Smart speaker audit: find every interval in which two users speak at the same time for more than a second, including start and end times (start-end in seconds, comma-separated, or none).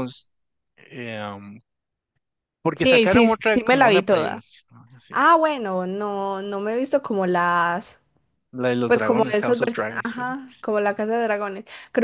2.7-4.4, 8.9-10.3